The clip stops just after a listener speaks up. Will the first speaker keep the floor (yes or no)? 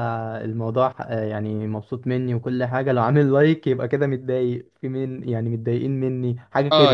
no